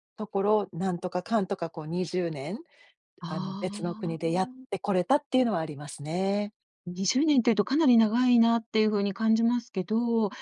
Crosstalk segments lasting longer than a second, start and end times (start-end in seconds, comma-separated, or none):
3.3-4.7